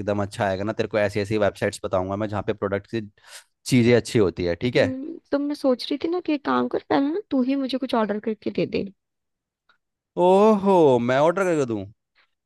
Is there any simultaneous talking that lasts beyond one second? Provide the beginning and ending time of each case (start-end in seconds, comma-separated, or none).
none